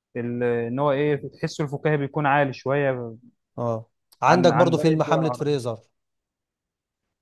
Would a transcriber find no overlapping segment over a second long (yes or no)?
no